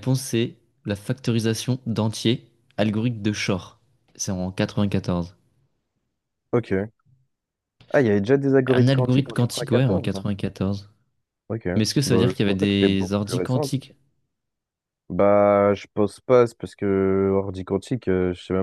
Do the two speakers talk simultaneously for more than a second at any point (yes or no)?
yes